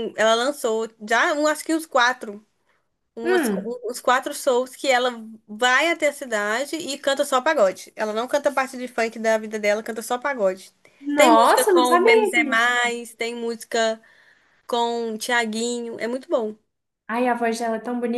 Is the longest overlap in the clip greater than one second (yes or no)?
yes